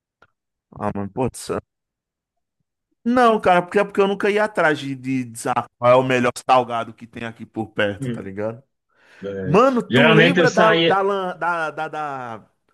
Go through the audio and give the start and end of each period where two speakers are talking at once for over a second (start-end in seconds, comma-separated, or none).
9.4-11.0